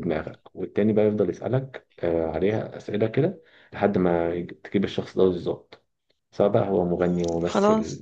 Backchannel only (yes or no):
yes